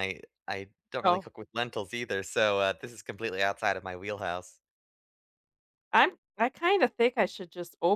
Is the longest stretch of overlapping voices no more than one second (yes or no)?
yes